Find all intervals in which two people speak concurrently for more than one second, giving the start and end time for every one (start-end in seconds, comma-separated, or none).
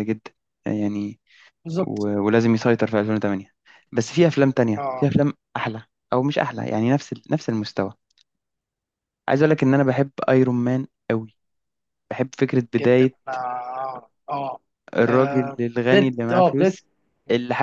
15.1-16.8